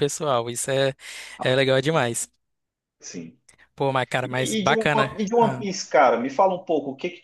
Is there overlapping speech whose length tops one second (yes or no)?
yes